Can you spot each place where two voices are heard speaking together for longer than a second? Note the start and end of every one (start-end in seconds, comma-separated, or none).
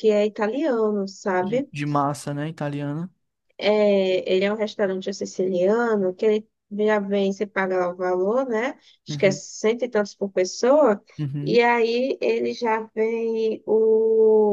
none